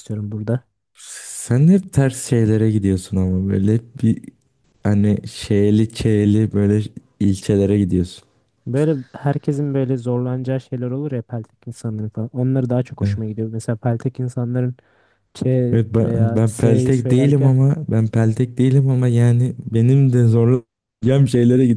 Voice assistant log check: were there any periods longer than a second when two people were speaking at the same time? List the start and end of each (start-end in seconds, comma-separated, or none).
16.0-17.5